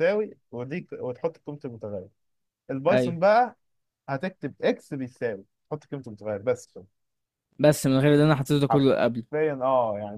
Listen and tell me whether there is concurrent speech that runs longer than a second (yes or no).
no